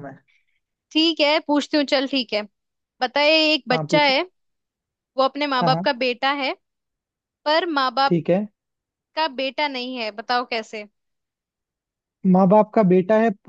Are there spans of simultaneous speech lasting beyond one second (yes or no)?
no